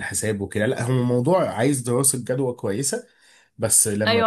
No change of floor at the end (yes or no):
no